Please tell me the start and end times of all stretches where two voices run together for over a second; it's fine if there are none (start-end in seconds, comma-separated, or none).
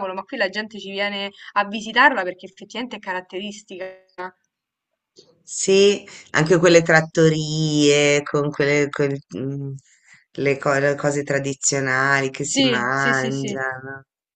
12.4-13.6